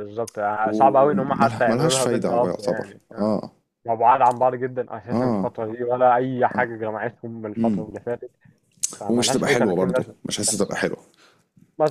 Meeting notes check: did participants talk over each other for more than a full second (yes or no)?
yes